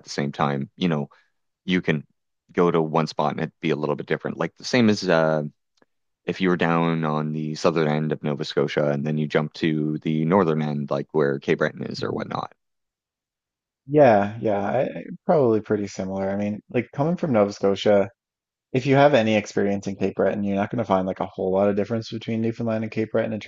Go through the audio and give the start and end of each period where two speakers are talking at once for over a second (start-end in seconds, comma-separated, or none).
none